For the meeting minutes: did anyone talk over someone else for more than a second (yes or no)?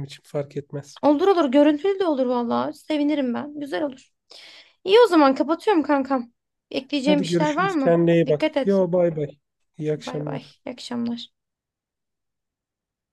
yes